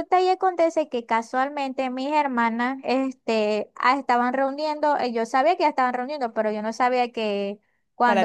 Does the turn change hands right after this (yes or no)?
no